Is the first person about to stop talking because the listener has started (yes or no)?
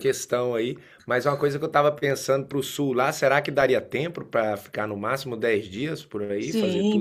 yes